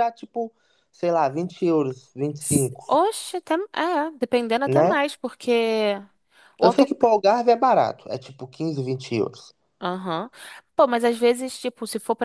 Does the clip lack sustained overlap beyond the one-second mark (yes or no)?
yes